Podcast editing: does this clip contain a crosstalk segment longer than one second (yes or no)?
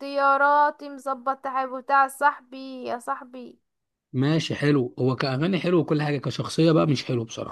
no